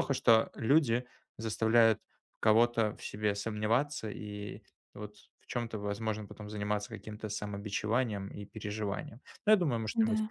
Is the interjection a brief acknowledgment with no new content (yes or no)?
yes